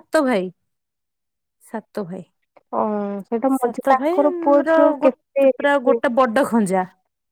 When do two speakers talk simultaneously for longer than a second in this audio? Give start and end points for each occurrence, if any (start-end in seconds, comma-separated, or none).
3.6-6.0